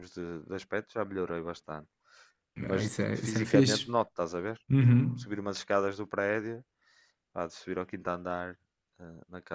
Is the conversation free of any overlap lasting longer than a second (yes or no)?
no